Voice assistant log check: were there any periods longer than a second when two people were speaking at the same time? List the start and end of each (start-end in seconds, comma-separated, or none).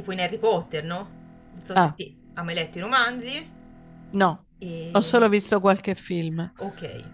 none